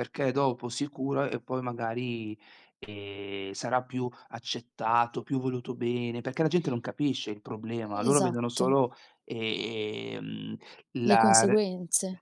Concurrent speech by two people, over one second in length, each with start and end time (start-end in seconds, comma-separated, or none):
none